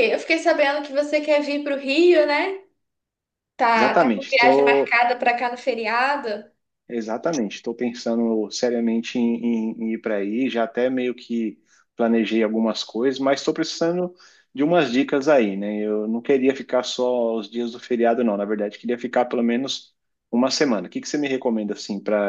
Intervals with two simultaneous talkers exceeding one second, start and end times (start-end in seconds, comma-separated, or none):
3.7-5.0